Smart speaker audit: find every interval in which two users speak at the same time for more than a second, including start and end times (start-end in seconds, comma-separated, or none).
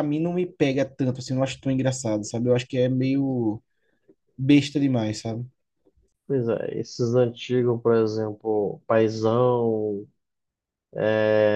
none